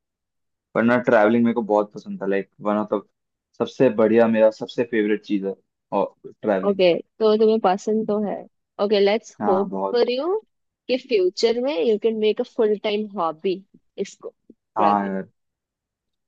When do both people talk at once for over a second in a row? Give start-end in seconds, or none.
none